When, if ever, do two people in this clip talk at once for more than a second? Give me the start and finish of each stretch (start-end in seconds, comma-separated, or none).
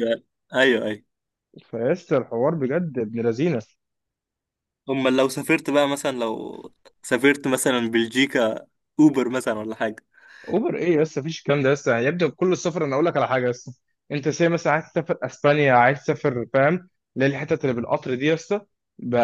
none